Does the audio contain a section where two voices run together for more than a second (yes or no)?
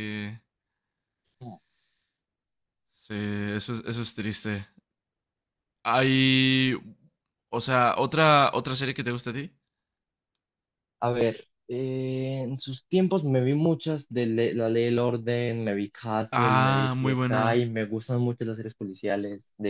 yes